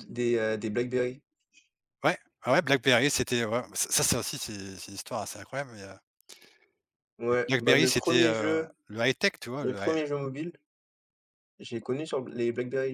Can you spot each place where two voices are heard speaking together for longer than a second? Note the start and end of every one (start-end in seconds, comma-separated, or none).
7.5-8.7